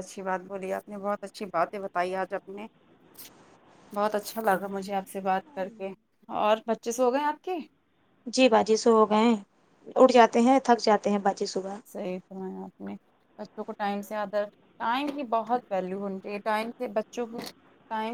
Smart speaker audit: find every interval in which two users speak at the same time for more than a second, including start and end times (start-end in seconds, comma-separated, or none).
none